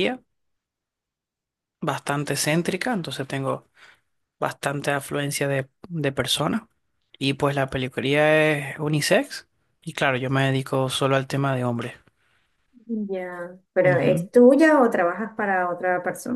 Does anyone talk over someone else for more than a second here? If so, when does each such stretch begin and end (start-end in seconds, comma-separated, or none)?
none